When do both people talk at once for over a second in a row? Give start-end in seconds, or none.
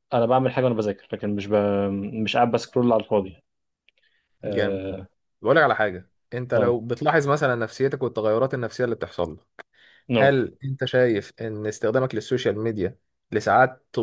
none